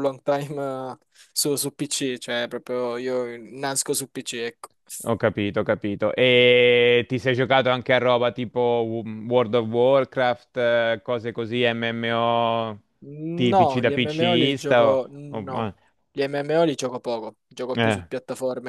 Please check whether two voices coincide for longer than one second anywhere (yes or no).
yes